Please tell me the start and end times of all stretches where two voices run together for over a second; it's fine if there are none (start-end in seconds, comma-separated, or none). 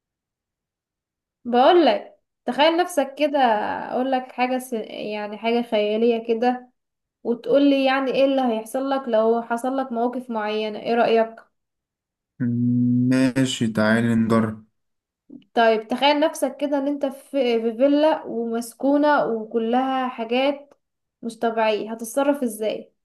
none